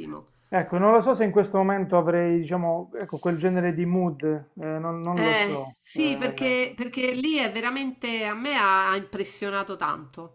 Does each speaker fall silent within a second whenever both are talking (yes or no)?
no